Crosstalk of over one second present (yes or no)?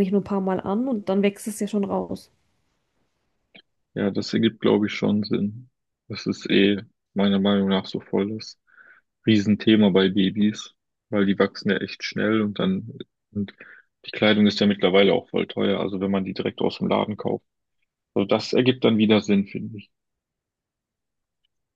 no